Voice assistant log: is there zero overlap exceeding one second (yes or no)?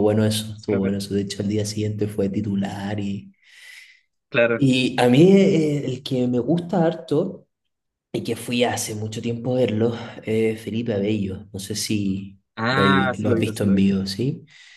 no